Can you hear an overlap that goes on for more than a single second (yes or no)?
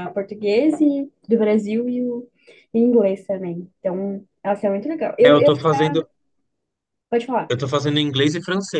no